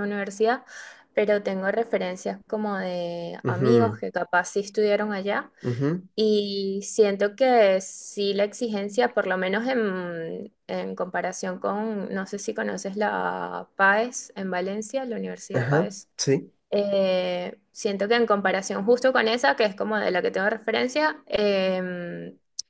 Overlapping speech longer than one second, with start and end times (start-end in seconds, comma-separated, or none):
none